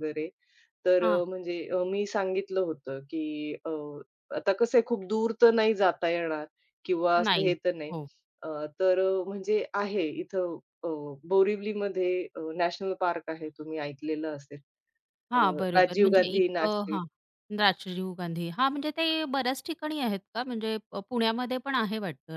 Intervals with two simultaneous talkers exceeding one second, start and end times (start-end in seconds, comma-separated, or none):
15.3-17.0